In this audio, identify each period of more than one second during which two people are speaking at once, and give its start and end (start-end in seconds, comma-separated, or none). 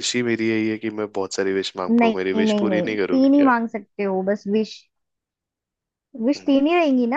1.9-3.5